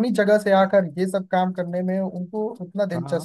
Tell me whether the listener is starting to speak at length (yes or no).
yes